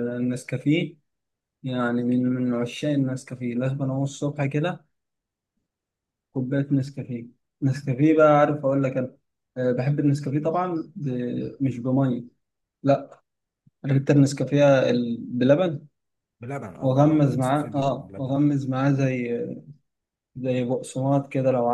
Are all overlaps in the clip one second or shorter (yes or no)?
no